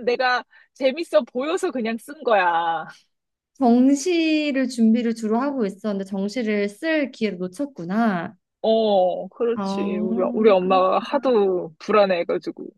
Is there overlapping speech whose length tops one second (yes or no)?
yes